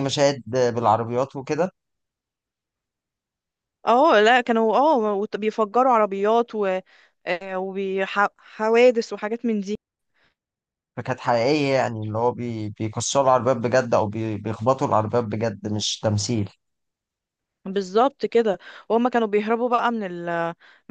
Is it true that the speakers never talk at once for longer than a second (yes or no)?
yes